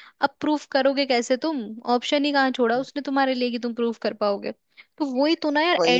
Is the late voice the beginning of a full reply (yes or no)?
no